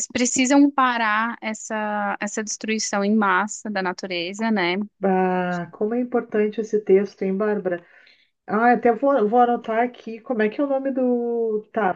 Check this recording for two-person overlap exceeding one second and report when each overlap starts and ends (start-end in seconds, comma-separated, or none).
none